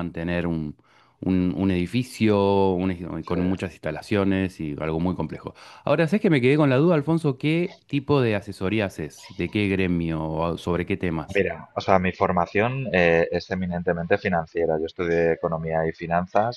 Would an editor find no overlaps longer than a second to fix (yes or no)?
yes